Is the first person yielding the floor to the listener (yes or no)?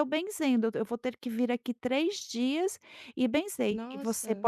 no